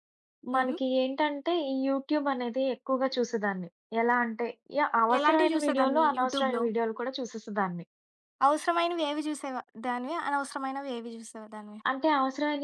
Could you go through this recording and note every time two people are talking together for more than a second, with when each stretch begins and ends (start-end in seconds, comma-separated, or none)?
5.2-6.6